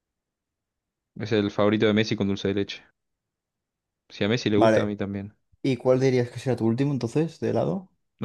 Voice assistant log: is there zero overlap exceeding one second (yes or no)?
yes